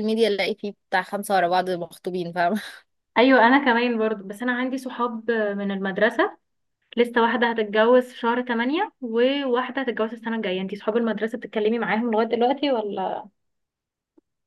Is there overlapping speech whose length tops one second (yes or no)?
no